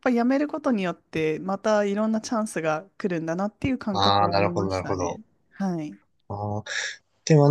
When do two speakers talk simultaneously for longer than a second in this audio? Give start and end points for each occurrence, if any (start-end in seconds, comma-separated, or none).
3.9-5.2